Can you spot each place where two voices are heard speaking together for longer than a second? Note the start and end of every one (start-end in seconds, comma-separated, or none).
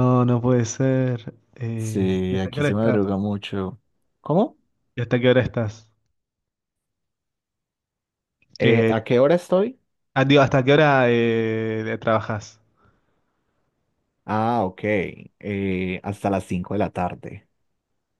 1.8-3.0